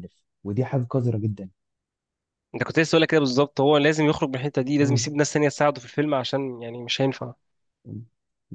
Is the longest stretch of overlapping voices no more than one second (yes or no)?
yes